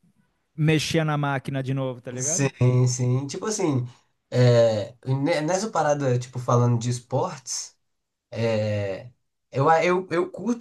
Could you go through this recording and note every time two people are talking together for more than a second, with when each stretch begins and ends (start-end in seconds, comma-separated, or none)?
none